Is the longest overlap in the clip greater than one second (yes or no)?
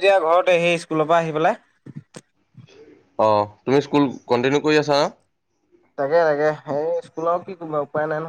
no